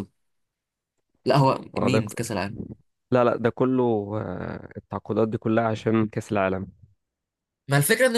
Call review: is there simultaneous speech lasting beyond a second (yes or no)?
no